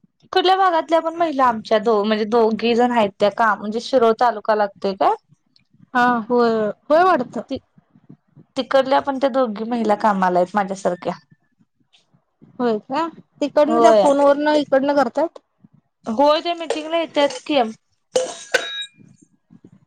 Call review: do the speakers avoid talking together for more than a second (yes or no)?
yes